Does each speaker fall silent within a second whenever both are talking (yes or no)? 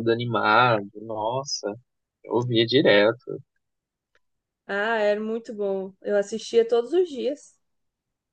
yes